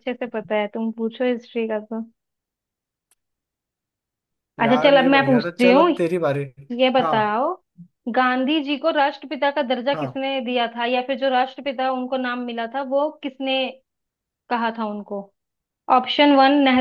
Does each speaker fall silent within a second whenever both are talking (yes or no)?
no